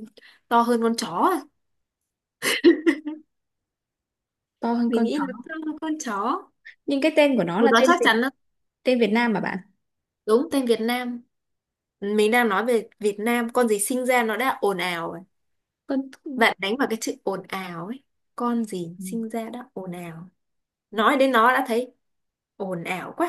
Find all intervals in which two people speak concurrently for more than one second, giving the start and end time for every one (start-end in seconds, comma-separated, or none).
none